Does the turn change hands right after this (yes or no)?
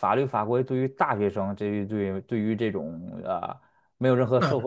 no